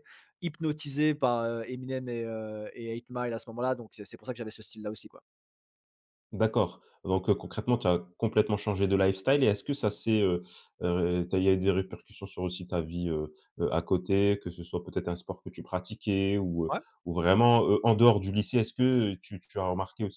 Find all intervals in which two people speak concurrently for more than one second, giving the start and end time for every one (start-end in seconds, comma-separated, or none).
none